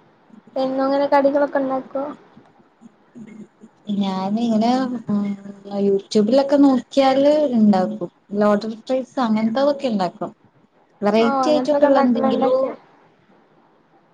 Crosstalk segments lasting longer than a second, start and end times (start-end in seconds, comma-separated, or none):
11.2-12.6